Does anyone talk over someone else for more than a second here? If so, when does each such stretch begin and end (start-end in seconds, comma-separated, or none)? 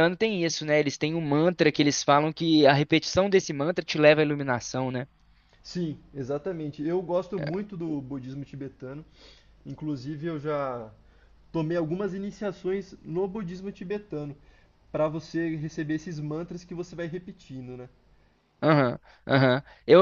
none